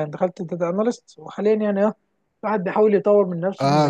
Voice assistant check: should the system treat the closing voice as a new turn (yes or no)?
yes